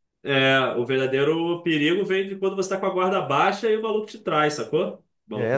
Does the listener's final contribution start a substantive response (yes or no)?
yes